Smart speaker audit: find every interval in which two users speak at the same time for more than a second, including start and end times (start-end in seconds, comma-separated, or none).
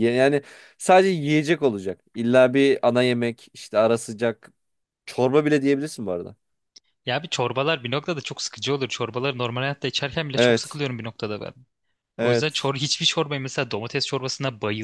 none